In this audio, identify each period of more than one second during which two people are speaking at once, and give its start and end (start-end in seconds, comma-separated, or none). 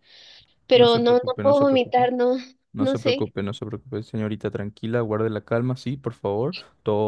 0.7-2.1